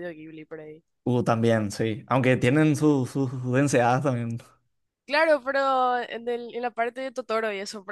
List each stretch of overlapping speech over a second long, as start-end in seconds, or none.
none